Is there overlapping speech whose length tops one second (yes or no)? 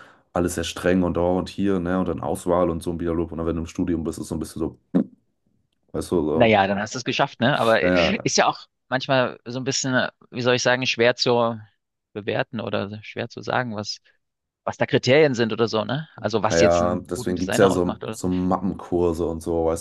yes